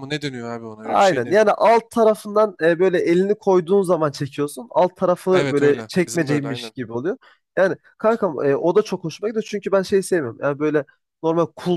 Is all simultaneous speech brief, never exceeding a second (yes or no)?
no